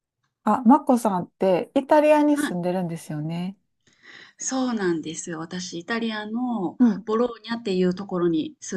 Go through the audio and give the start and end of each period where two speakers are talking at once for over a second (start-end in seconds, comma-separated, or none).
none